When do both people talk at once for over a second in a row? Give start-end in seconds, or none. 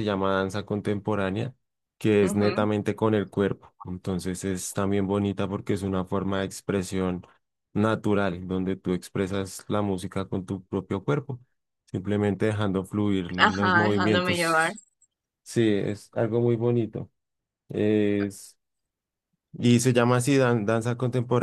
13.4-14.7